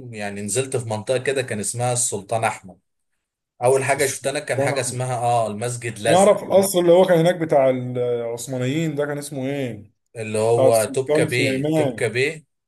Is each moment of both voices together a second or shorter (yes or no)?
no